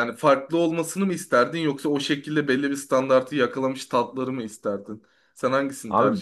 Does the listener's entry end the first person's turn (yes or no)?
yes